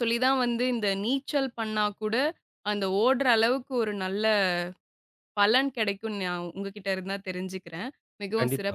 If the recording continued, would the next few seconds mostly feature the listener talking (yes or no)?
yes